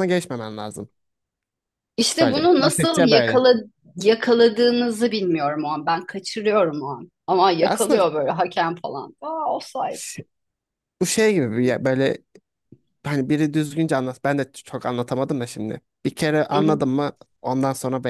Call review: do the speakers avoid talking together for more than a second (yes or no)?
no